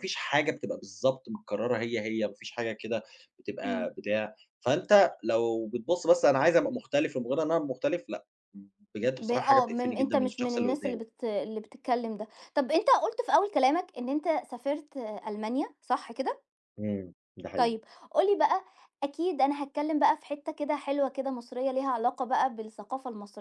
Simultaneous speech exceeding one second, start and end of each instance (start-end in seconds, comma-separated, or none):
9.2-11.0